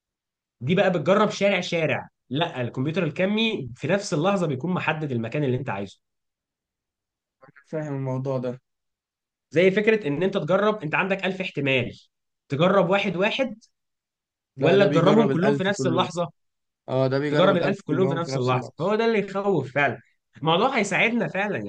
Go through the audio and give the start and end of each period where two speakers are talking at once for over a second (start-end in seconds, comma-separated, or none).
14.6-16.1, 17.3-18.9